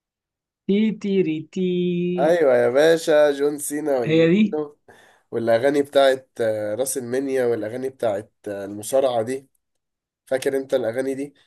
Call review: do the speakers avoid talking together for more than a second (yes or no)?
yes